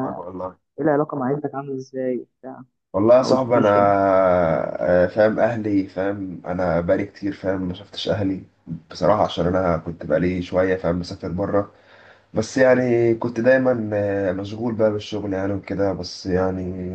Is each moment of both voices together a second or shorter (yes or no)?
yes